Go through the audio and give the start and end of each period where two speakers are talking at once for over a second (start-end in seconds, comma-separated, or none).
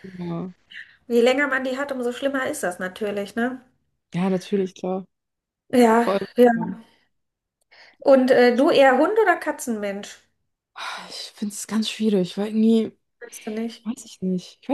none